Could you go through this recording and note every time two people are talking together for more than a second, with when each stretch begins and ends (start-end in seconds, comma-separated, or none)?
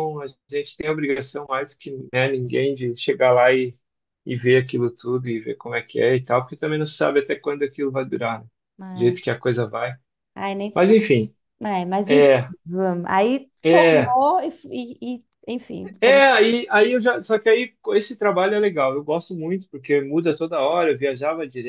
none